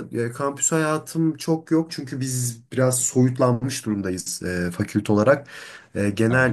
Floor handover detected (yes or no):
no